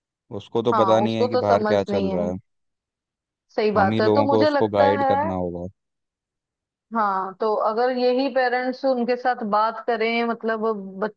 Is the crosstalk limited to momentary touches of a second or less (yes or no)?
no